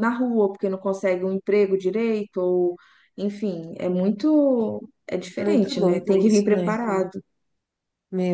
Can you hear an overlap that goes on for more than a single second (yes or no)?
yes